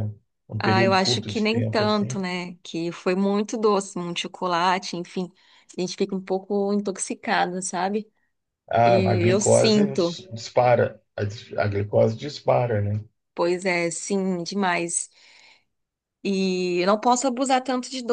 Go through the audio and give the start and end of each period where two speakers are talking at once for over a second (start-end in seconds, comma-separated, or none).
0.6-2.2, 8.8-10.2